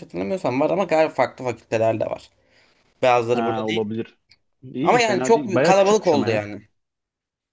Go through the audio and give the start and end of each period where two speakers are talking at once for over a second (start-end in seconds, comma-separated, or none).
4.8-6.4